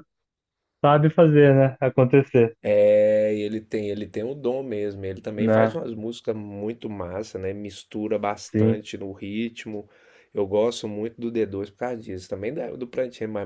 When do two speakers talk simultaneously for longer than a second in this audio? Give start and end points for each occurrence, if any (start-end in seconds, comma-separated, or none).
none